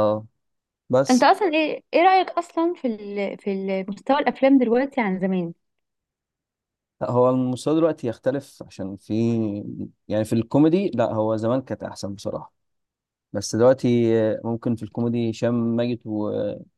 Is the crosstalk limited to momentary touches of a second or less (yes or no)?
yes